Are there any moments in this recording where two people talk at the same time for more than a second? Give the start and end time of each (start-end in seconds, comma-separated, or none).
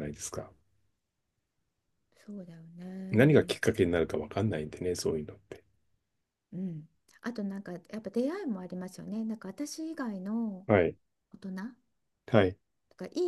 none